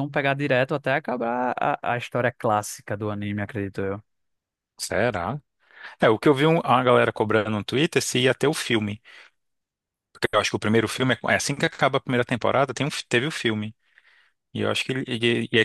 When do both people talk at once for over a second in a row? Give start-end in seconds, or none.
none